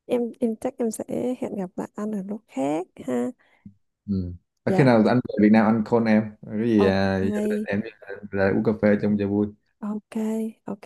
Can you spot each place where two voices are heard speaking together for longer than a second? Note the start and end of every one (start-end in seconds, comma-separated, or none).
none